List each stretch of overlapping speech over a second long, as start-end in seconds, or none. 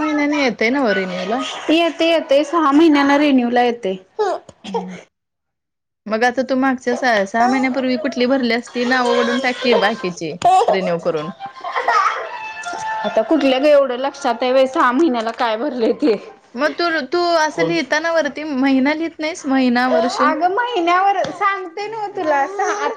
none